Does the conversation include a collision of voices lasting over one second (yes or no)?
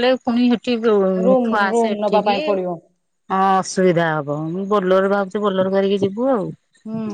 yes